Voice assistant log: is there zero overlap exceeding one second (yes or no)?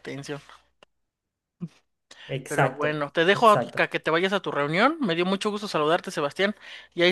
no